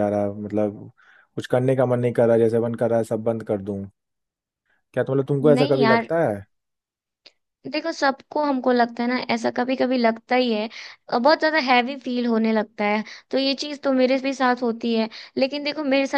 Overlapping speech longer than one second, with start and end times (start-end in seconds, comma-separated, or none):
none